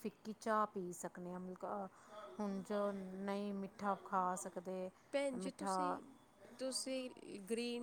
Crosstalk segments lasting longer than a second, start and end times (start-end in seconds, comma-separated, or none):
none